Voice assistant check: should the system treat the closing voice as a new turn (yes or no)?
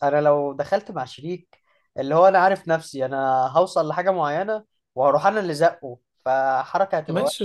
yes